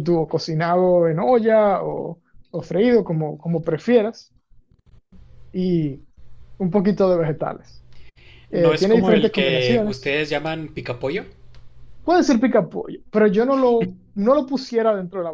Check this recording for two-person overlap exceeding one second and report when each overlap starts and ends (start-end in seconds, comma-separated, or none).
8.5-10.2